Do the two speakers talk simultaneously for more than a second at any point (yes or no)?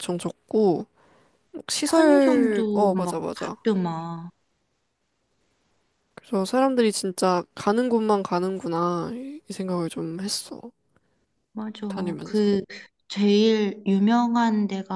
yes